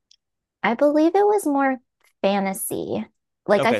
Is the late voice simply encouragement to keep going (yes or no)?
no